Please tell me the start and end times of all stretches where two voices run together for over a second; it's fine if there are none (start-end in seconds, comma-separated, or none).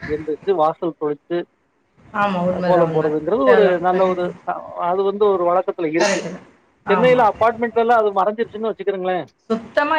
none